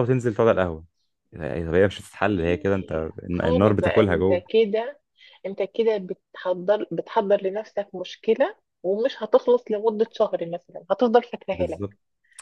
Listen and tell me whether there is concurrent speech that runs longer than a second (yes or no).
yes